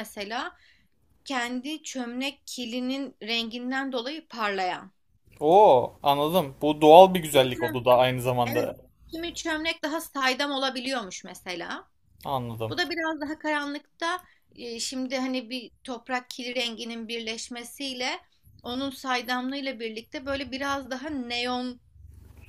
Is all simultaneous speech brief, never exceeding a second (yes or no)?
yes